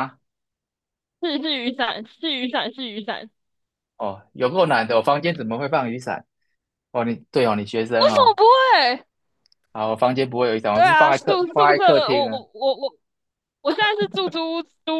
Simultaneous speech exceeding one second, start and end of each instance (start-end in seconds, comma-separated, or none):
10.7-12.4